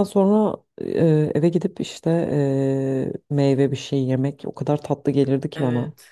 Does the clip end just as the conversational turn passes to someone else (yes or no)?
yes